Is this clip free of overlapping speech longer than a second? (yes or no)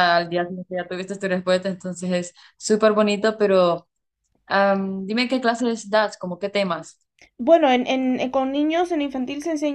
yes